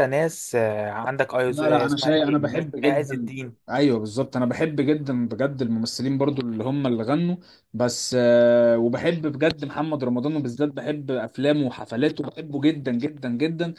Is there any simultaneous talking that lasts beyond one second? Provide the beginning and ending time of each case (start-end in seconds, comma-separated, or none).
1.5-3.3